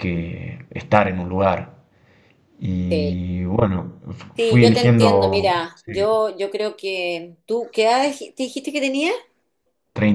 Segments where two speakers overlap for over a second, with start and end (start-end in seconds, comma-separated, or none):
4.4-6.0